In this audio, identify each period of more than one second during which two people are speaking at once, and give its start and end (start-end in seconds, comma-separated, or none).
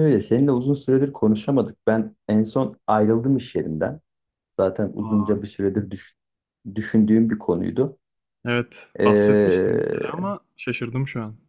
9.0-10.3